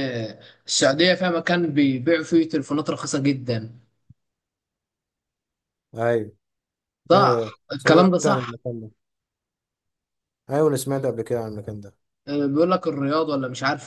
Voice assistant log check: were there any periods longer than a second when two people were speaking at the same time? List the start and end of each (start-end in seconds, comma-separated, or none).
7.1-8.5